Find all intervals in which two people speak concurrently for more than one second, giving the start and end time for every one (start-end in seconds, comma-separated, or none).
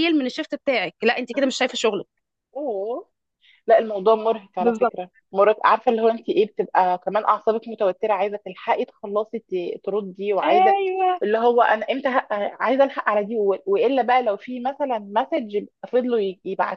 none